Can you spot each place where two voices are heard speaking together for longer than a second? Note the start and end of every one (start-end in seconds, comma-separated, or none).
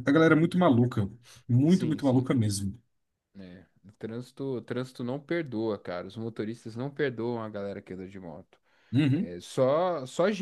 none